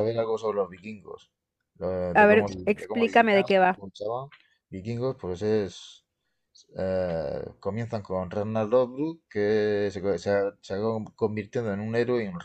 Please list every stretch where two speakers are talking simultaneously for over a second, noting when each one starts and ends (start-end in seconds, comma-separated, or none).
2.1-3.8